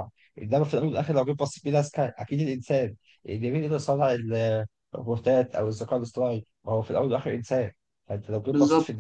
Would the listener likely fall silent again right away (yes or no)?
yes